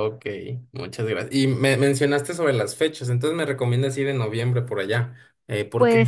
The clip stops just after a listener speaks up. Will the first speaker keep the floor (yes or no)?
no